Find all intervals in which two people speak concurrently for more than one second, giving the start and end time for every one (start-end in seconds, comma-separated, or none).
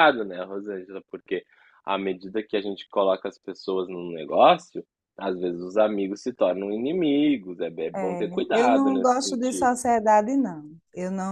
8.0-9.7